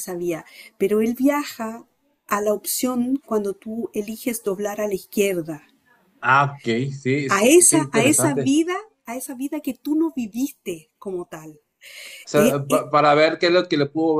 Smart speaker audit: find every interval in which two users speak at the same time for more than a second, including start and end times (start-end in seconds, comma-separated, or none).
7.3-8.6